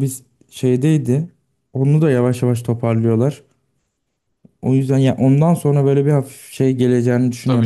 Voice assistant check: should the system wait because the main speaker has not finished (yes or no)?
no